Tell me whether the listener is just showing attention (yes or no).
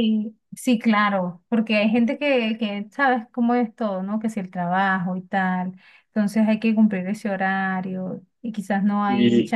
yes